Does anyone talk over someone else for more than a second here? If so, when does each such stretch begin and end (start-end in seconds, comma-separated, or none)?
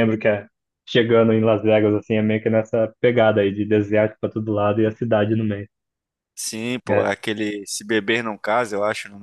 none